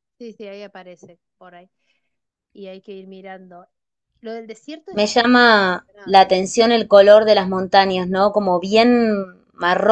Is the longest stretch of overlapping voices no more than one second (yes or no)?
no